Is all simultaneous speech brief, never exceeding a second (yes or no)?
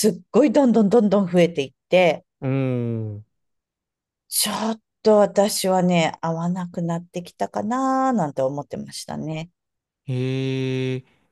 yes